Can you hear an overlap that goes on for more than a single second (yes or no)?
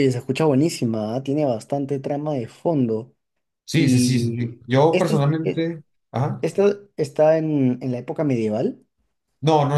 yes